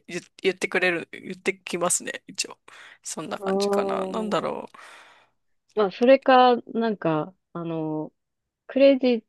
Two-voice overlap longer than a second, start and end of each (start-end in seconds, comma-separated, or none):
3.4-4.6